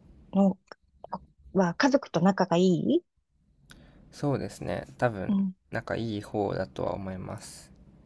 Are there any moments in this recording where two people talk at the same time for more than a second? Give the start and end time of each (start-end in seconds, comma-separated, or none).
none